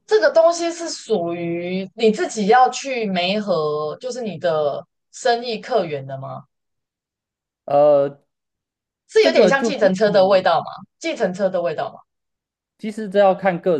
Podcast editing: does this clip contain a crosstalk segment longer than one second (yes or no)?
yes